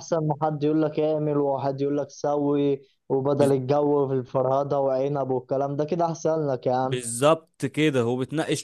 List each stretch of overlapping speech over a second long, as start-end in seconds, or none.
none